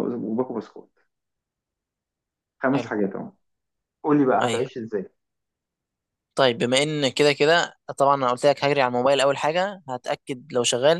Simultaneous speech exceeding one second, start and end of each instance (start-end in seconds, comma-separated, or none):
none